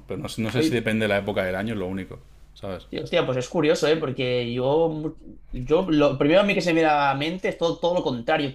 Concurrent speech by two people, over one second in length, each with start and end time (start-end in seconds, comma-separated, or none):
none